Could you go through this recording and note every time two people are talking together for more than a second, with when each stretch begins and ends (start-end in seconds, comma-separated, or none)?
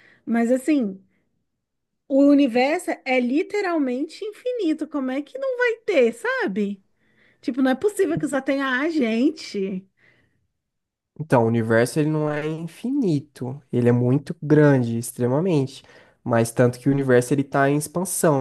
none